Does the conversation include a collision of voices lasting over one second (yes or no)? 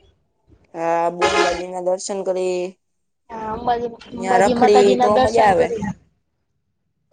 yes